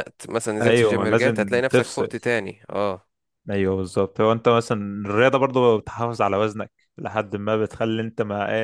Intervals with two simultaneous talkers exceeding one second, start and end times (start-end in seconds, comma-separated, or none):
0.6-2.1